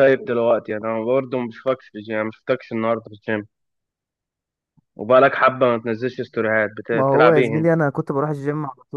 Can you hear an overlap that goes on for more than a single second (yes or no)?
no